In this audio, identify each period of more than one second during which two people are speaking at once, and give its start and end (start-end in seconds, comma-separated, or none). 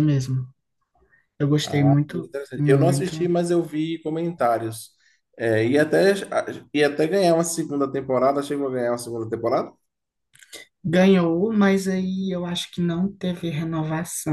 1.6-3.1